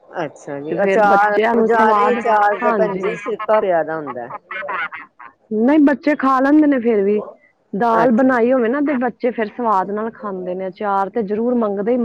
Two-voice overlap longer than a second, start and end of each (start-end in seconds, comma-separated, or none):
0.7-3.0